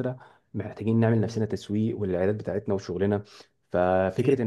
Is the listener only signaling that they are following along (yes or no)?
yes